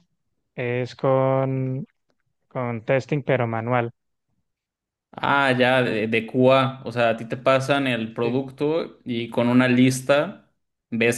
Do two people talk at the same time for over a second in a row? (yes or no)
no